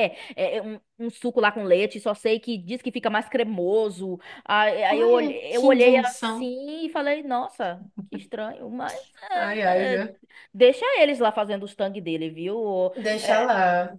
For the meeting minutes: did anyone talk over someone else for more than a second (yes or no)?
yes